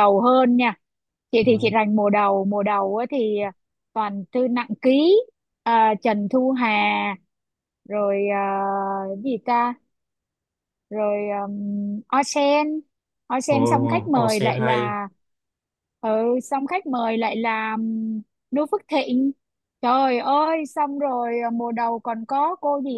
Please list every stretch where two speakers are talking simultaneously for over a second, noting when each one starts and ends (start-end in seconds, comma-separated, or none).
13.5-15.0